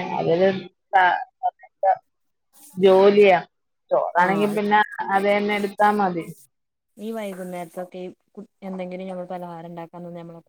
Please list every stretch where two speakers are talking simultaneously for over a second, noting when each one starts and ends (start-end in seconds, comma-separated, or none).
none